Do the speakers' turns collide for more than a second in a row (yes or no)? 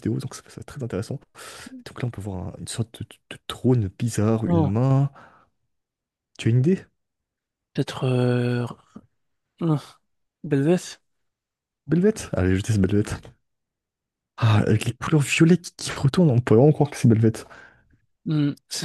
no